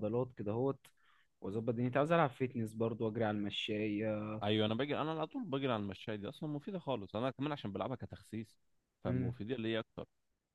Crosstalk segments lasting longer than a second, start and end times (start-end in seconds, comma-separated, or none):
none